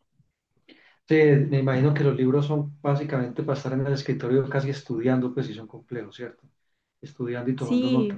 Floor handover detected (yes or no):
no